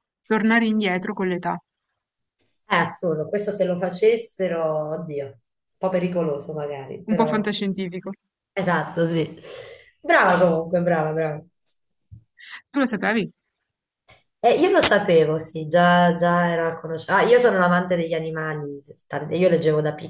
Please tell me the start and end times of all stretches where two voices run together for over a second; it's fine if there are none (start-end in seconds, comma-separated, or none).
none